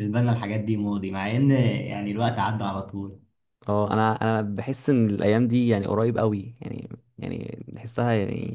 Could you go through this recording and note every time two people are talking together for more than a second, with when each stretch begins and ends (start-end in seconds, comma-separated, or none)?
none